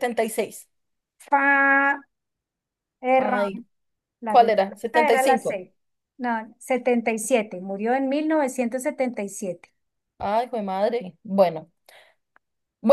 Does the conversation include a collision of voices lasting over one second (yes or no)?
yes